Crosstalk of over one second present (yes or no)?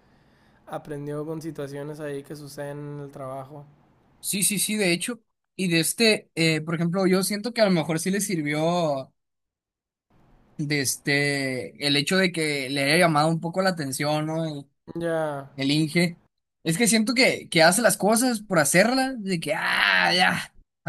no